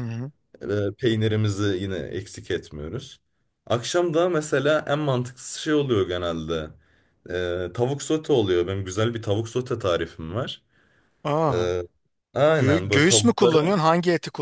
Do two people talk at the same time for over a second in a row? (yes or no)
yes